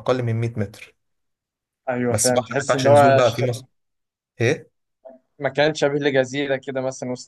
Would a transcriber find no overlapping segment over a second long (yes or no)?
no